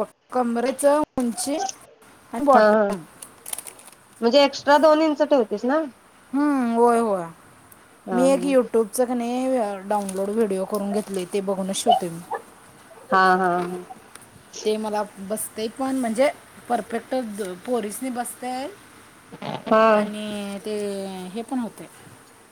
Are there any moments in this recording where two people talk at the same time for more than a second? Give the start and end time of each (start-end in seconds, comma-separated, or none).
none